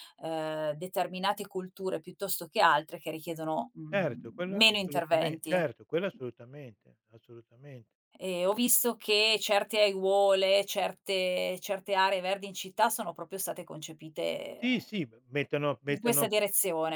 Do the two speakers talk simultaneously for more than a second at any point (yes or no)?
yes